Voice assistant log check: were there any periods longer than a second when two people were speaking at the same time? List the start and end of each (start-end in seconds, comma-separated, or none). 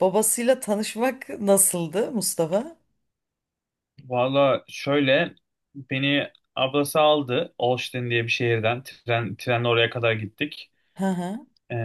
none